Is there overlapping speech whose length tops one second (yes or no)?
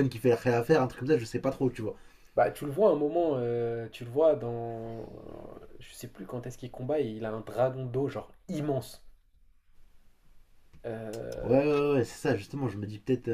no